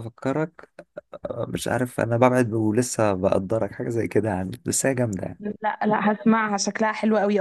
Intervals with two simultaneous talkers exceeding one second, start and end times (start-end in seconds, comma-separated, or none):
none